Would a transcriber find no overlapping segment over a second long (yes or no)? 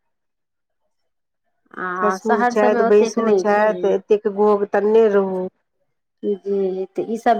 no